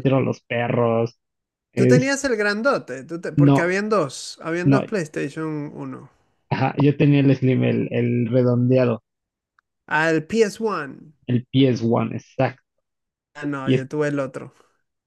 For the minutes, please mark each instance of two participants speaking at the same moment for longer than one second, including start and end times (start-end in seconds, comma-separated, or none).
none